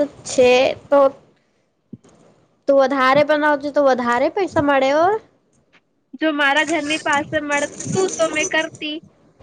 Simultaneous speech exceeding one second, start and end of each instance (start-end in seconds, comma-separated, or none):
none